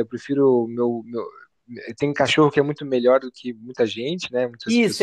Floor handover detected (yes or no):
yes